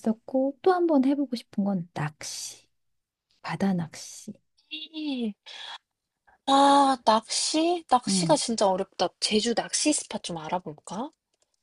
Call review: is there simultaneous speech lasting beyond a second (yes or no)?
no